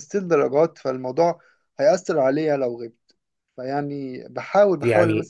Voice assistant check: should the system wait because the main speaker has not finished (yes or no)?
yes